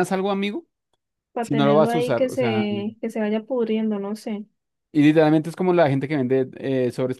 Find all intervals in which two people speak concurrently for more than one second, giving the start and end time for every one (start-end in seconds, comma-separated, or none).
1.4-2.6